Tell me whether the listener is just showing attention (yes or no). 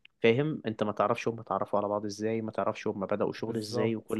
yes